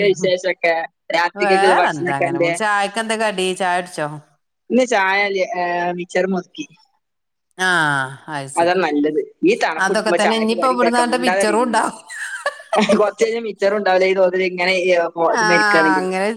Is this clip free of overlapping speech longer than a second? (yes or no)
no